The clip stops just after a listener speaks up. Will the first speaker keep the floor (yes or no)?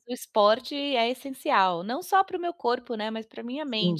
no